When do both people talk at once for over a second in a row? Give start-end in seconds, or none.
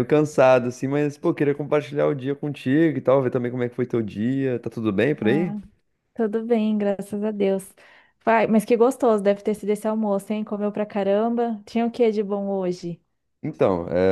none